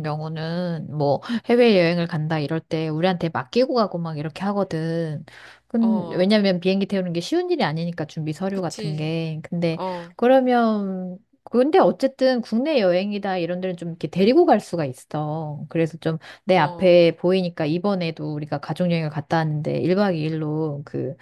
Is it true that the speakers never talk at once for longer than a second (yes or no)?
yes